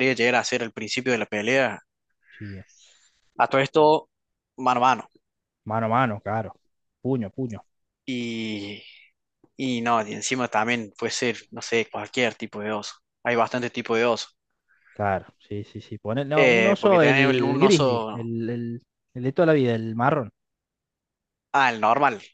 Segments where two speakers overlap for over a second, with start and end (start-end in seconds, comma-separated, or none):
16.3-18.3